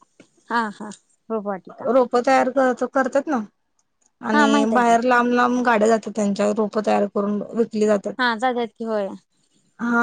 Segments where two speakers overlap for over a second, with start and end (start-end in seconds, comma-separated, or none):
none